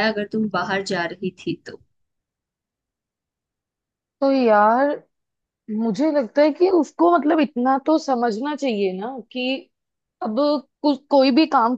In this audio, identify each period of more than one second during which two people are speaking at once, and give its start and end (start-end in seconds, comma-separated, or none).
none